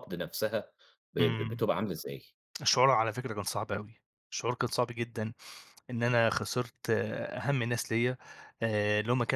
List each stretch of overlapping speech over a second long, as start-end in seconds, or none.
none